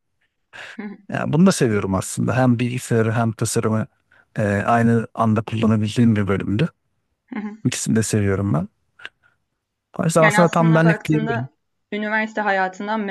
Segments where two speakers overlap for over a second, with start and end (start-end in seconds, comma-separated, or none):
10.2-11.5